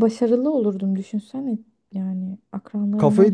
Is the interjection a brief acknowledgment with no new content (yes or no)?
no